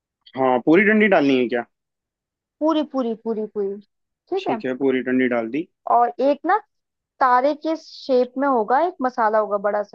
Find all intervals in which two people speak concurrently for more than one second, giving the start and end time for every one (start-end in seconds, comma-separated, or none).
none